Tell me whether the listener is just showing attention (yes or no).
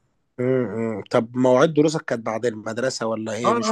no